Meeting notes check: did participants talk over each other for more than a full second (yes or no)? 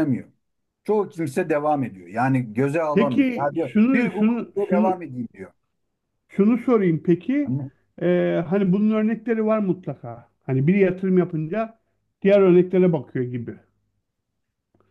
yes